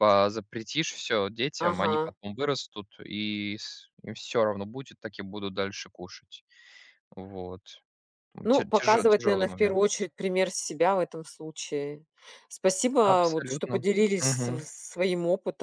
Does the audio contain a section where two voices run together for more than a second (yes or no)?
yes